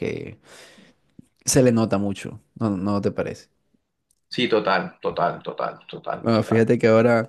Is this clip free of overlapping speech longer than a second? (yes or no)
yes